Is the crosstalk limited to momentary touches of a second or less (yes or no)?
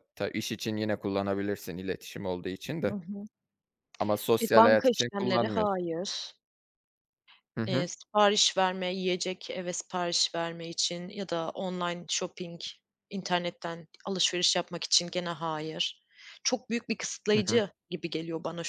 no